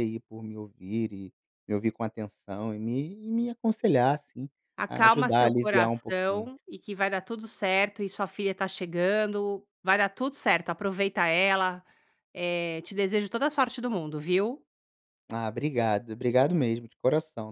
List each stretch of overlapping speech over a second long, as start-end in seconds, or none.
4.9-6.5